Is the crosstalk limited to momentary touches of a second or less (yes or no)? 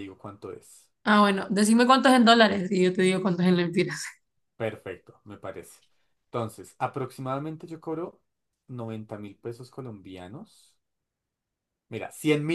yes